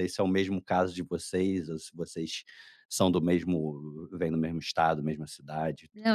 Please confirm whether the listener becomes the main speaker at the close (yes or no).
yes